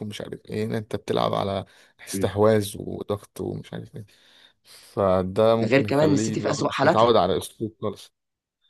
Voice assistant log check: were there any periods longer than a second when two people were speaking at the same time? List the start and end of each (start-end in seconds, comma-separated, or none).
5.6-7.1